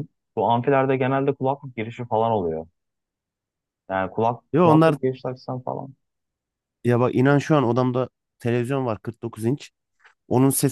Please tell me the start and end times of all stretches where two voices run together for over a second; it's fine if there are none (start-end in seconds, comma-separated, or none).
none